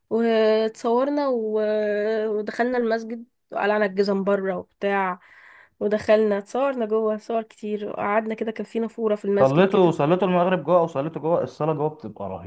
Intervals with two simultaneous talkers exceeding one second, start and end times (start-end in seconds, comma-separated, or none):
none